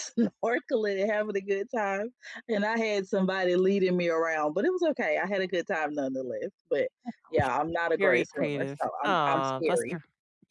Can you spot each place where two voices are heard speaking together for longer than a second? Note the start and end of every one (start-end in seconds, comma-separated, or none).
8.0-10.0